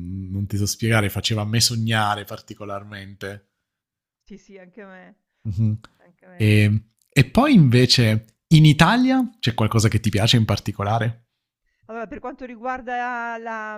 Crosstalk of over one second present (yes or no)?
no